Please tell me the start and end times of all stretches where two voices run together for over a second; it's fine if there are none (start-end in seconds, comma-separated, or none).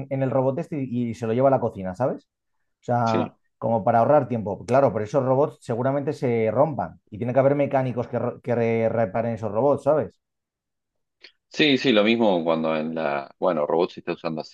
none